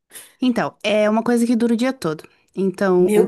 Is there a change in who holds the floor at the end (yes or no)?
no